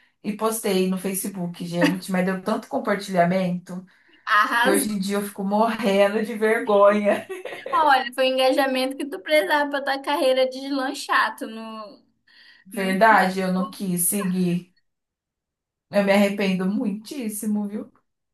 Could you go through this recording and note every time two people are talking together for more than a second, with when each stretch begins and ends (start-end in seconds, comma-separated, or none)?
none